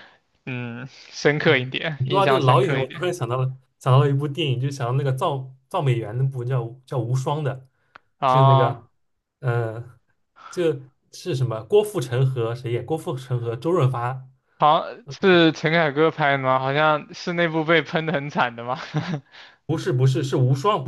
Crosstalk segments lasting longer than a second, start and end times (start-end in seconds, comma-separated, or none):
1.4-3.0